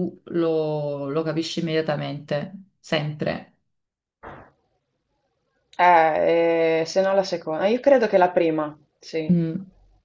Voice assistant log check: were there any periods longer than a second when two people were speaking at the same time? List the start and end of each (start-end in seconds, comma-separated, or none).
none